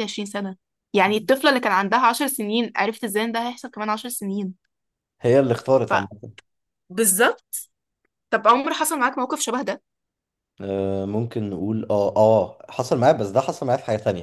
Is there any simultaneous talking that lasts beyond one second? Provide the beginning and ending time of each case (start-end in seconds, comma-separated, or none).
none